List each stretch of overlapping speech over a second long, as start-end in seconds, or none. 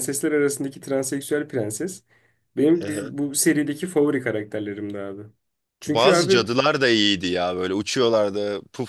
none